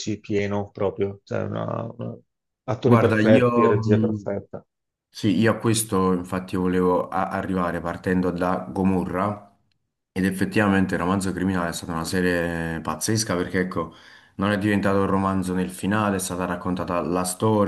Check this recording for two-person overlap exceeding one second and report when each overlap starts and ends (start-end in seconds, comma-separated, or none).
2.9-4.3